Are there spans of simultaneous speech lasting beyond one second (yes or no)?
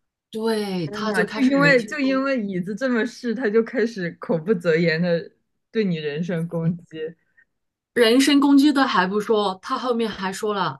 yes